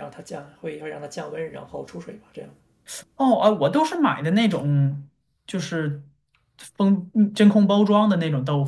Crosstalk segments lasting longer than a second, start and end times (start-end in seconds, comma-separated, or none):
none